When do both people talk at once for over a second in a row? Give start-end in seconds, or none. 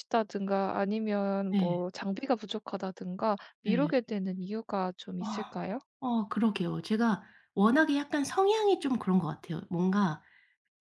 none